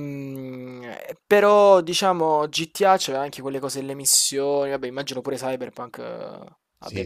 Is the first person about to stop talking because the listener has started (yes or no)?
yes